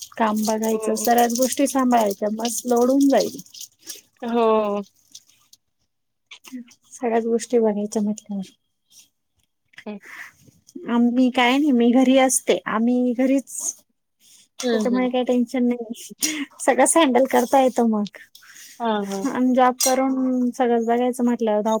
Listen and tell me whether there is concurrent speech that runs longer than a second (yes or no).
no